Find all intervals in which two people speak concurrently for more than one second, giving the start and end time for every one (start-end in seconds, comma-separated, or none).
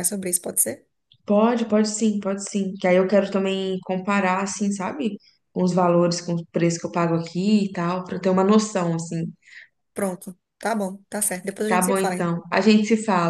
none